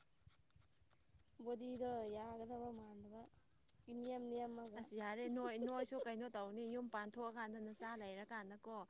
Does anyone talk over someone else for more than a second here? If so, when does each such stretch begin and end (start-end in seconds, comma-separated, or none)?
none